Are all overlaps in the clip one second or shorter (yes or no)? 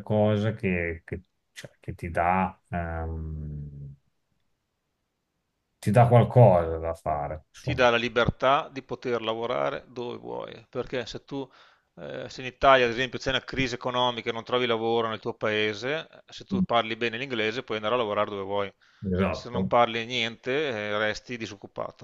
yes